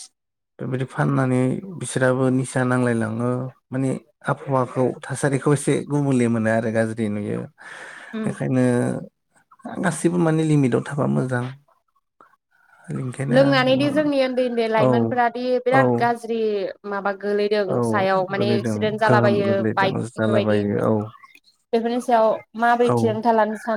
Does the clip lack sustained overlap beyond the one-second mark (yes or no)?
no